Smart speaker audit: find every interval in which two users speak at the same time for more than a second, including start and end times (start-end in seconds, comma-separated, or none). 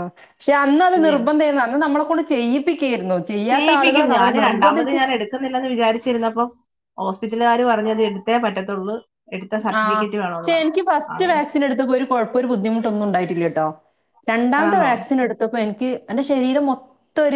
3.5-5.0